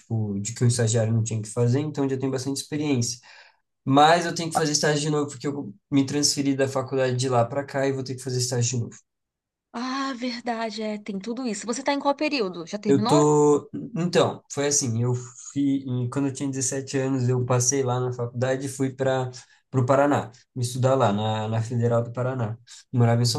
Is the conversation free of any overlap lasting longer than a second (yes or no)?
yes